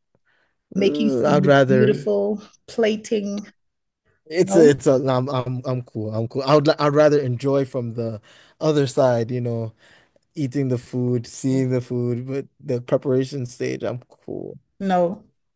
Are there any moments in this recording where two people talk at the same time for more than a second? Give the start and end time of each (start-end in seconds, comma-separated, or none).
0.8-2.1